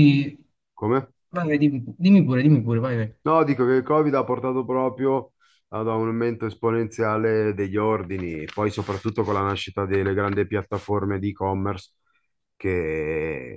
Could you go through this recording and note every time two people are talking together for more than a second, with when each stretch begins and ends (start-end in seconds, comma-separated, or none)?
none